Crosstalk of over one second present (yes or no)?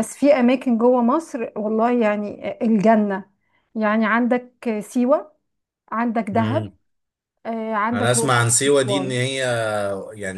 yes